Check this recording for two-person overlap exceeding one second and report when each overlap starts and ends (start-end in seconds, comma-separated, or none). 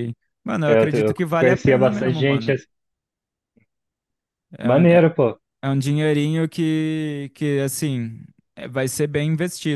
0.7-2.6